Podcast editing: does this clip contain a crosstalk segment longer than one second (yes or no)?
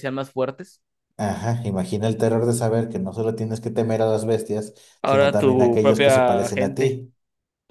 yes